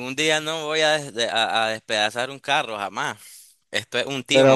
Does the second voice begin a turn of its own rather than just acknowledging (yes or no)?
no